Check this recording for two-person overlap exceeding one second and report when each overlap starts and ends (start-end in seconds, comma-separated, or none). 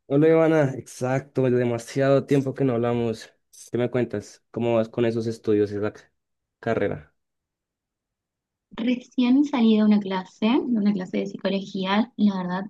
none